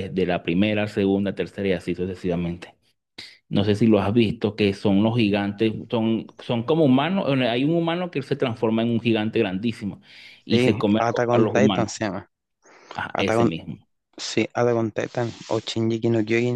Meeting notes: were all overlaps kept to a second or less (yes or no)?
no